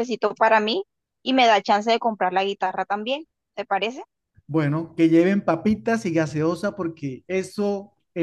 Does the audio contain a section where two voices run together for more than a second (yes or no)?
no